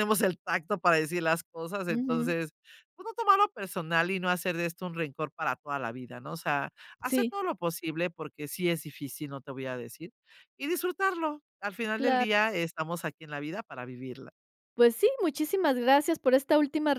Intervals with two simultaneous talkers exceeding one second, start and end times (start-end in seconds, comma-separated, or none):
none